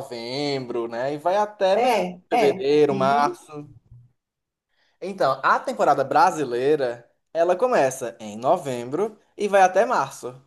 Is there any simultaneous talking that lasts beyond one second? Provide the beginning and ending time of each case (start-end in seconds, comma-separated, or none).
1.8-3.4